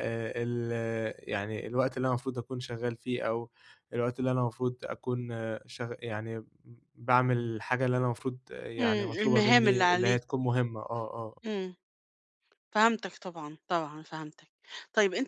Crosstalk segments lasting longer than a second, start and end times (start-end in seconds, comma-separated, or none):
8.8-10.2